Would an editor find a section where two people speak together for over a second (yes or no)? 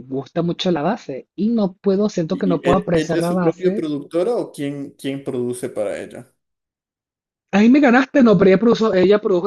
yes